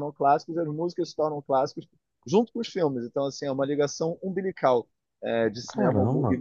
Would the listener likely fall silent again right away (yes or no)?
yes